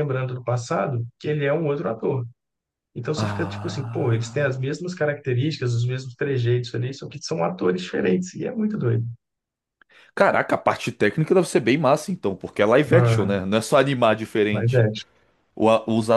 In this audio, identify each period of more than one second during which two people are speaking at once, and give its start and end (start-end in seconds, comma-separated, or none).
3.2-4.7